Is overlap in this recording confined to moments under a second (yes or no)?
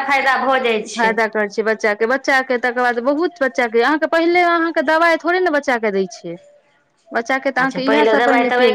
yes